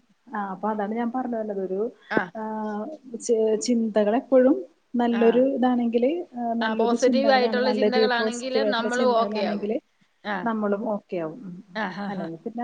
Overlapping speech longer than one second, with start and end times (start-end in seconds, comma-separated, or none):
6.7-9.7